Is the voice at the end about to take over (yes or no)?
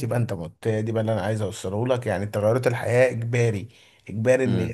no